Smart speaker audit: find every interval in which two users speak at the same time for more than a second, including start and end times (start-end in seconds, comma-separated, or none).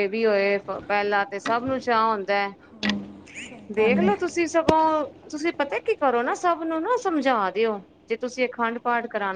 none